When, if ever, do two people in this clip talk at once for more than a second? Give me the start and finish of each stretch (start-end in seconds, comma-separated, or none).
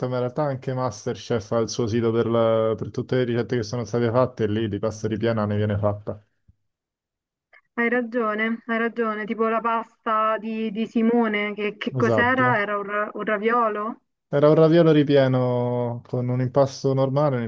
none